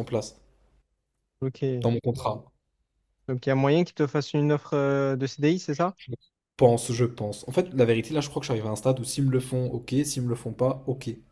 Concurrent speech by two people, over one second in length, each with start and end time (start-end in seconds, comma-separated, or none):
none